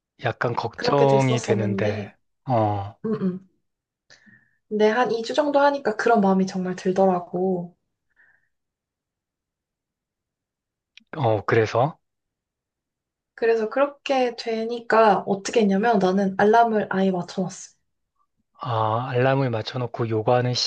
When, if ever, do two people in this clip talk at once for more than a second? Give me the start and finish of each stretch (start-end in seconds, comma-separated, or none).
0.8-2.1